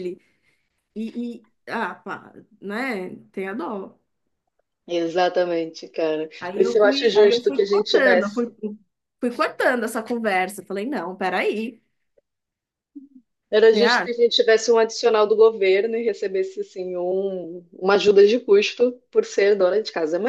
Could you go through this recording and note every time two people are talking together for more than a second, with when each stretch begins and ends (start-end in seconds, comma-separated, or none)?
6.4-8.5